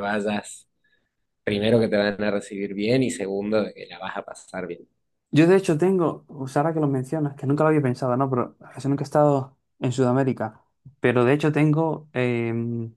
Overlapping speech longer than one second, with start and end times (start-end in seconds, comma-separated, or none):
none